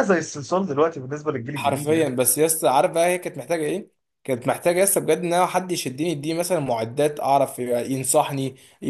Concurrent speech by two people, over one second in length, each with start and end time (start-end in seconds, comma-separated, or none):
none